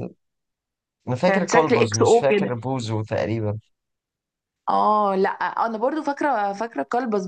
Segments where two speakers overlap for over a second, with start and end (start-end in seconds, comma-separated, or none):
1.3-2.5